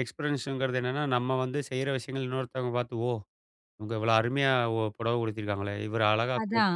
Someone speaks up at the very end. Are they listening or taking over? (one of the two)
taking over